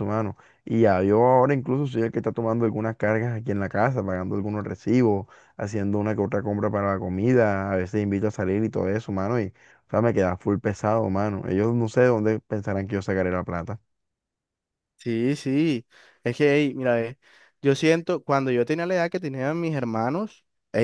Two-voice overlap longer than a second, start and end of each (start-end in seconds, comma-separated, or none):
none